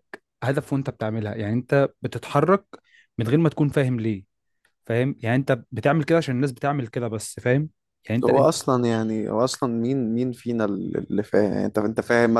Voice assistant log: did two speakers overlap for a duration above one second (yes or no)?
no